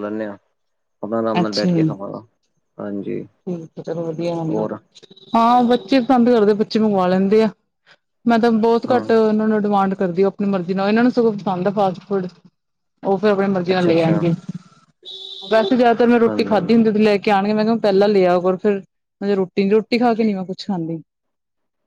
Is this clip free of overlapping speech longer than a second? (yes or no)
yes